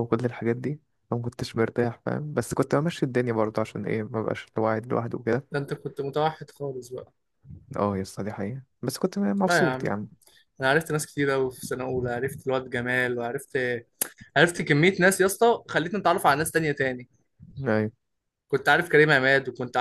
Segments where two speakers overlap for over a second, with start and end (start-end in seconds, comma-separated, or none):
none